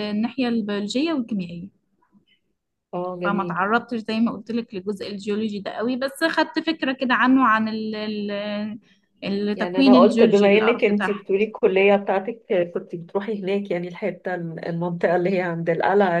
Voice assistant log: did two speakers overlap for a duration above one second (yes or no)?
yes